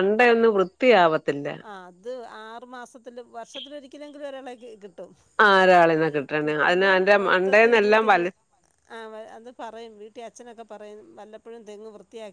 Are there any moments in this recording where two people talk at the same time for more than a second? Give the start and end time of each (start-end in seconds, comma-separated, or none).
6.4-8.3